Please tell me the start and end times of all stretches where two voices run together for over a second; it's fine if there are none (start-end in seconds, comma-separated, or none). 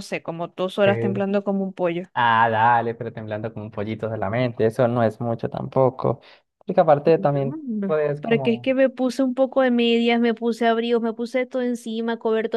7.2-8.7